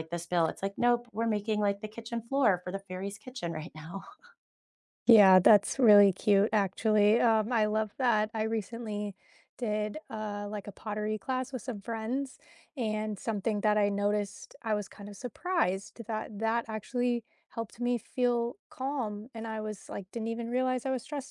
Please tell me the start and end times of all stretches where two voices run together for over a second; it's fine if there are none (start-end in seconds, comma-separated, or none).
none